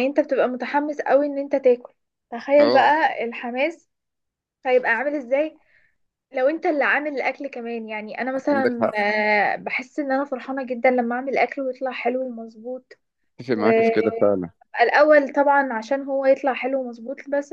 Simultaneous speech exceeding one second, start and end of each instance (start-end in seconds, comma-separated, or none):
none